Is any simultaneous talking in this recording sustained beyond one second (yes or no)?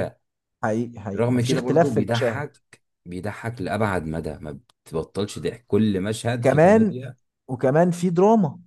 yes